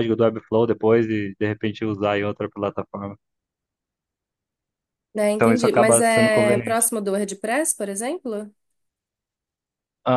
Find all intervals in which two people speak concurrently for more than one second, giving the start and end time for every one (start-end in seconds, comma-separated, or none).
5.3-6.9